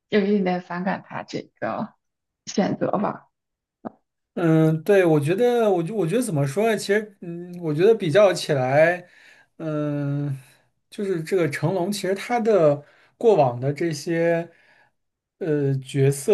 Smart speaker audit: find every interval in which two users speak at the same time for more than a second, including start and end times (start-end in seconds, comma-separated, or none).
none